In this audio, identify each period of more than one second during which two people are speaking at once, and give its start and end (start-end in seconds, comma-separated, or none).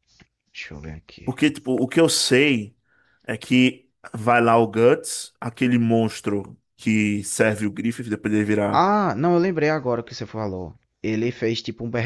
none